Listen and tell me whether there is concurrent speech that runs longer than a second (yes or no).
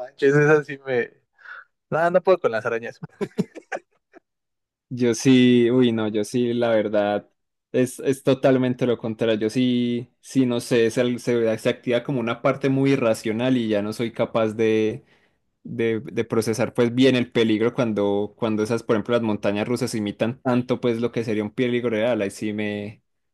no